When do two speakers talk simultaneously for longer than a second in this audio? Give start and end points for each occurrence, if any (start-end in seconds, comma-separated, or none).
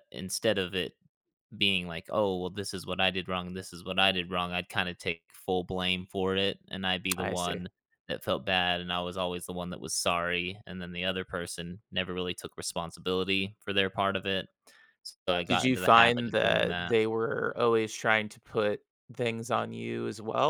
15.5-16.9